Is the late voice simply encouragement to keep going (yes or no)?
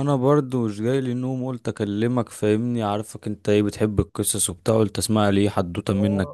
no